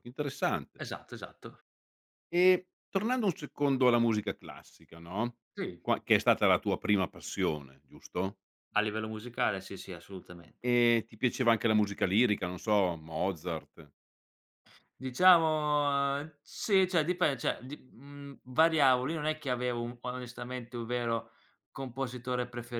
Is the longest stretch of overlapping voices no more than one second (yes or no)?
yes